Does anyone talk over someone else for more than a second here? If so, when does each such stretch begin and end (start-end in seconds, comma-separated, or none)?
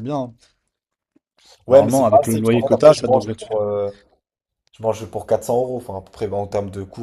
1.7-3.4